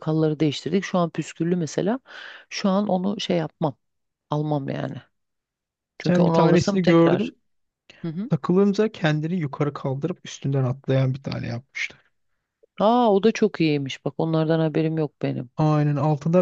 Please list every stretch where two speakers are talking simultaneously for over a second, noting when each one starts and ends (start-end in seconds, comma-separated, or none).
6.0-7.3